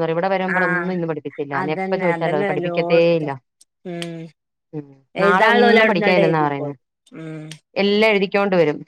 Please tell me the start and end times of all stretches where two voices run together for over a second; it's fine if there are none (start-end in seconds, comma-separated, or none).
1.6-3.3, 5.2-6.7